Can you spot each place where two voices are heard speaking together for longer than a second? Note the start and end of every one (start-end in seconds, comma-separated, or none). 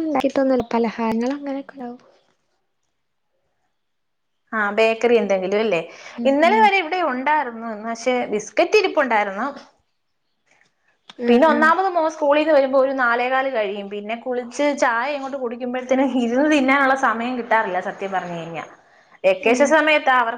none